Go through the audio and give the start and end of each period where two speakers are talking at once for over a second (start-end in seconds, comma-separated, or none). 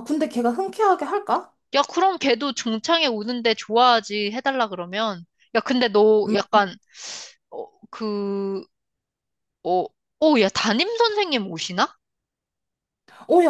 none